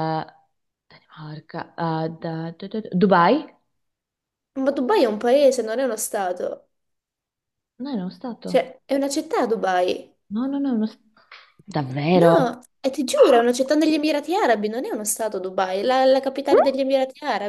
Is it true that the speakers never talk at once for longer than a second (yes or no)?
yes